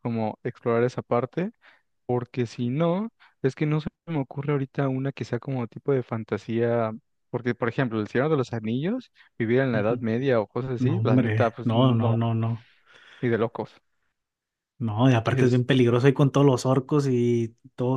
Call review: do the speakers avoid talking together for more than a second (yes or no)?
no